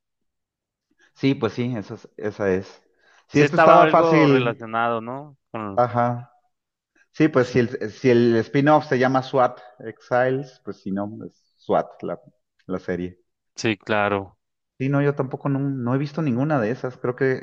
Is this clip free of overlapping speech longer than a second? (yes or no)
no